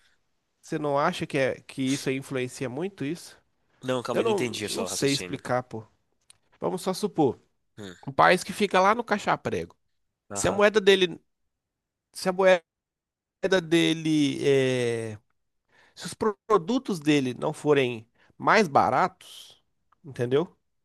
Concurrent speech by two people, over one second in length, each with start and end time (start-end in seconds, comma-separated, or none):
4.1-5.4